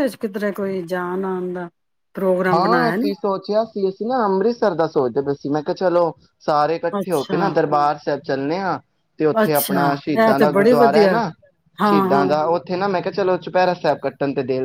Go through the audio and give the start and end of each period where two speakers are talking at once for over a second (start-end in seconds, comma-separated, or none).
9.4-11.2